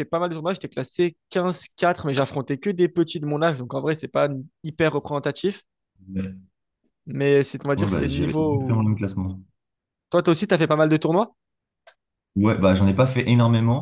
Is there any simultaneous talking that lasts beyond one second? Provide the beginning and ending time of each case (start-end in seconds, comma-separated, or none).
7.8-9.0